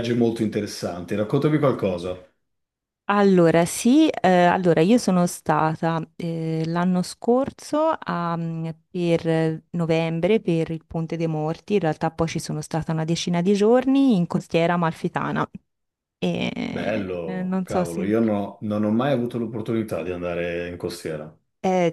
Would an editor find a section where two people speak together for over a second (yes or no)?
yes